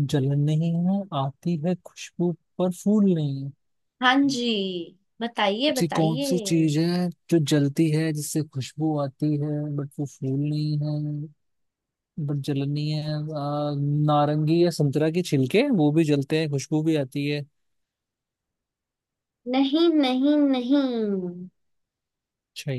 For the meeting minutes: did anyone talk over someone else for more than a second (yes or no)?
no